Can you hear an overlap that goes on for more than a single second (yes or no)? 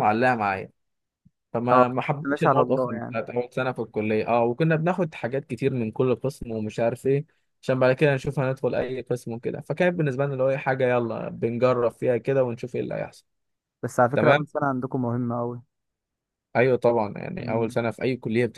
yes